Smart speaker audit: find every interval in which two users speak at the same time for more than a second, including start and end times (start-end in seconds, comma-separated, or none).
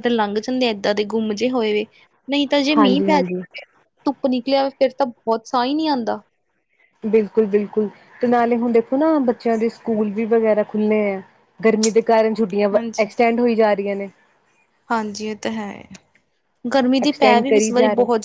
none